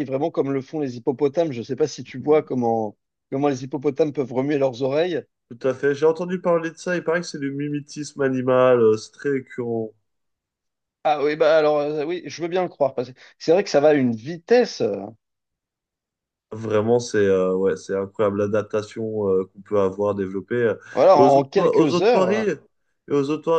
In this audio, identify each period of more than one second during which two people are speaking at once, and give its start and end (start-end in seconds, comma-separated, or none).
21.2-22.5